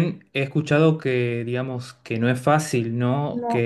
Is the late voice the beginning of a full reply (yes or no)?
no